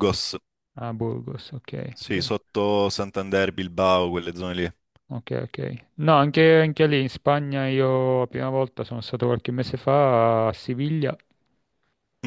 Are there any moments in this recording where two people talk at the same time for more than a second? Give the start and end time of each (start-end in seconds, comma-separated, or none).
none